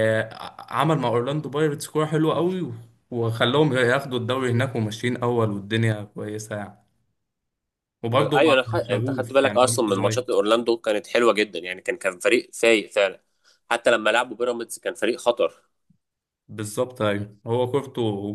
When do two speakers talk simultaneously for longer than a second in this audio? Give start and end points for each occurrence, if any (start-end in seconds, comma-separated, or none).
8.1-10.2